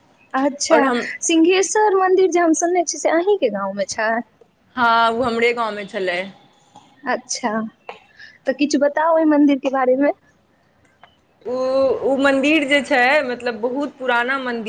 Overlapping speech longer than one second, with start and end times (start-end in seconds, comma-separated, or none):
none